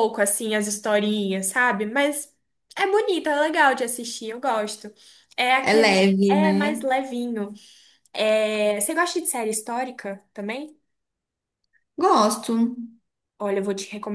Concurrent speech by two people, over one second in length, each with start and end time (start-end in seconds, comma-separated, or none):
5.6-6.8